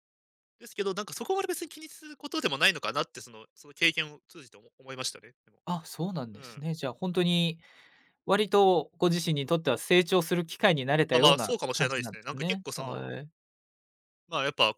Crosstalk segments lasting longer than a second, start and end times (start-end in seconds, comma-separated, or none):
11.1-13.1